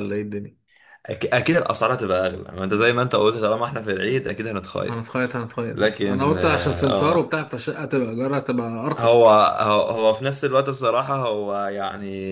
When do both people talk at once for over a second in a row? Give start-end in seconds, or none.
5.7-7.3